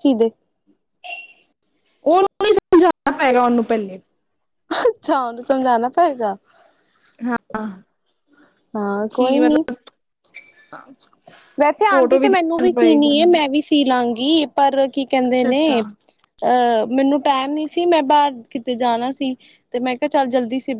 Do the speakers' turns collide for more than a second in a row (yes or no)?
yes